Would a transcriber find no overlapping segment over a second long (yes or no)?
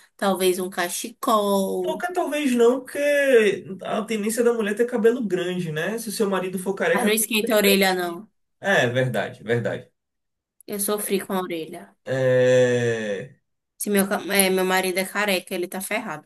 yes